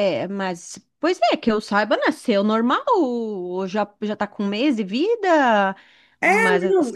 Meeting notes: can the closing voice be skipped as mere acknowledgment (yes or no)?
no